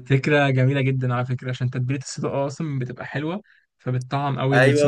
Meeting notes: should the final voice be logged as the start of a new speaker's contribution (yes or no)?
yes